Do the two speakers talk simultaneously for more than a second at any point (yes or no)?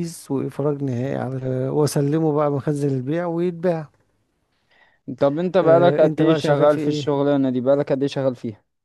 yes